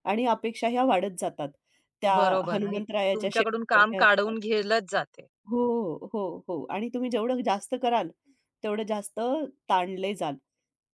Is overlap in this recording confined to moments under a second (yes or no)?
no